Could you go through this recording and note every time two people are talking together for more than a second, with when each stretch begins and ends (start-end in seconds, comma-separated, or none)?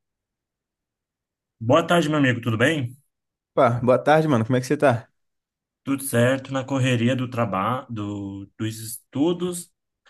none